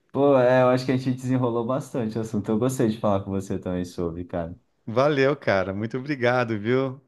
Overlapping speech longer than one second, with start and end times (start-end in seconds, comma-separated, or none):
none